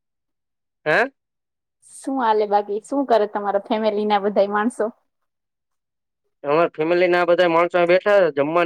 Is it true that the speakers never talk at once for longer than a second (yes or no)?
yes